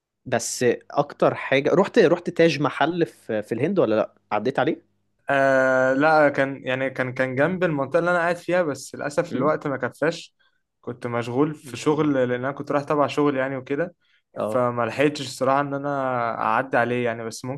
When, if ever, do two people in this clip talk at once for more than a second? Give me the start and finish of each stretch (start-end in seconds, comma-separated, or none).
none